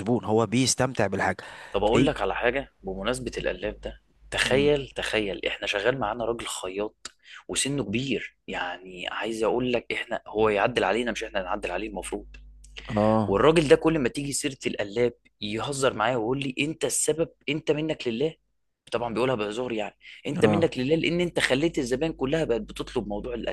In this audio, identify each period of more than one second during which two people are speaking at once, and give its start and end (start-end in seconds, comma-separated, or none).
none